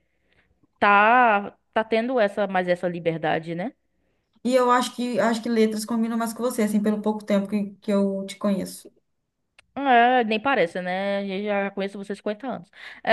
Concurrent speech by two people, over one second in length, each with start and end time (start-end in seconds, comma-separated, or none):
none